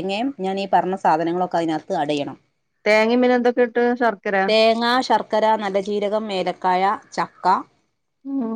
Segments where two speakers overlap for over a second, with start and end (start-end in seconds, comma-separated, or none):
none